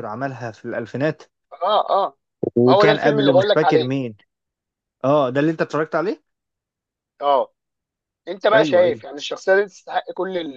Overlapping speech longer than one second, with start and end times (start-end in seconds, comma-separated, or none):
2.6-3.9